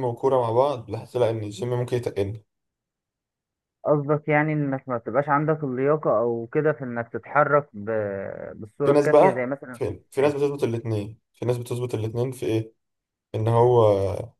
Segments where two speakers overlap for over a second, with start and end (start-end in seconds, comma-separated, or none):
8.8-10.5